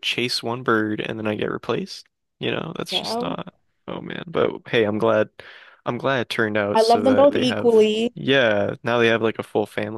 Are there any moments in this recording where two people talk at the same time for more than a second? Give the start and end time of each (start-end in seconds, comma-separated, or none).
6.8-8.1